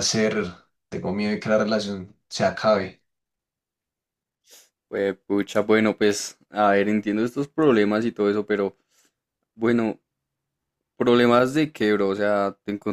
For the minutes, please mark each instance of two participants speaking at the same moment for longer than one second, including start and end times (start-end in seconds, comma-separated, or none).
none